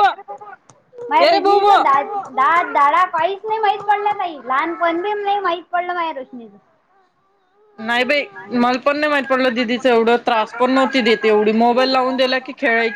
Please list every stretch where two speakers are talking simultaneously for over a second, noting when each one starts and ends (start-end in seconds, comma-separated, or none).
none